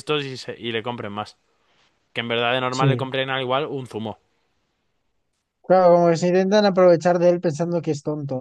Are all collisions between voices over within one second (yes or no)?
yes